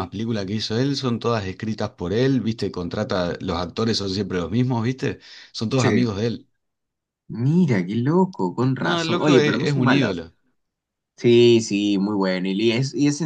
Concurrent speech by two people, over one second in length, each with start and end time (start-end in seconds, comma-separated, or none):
8.8-10.2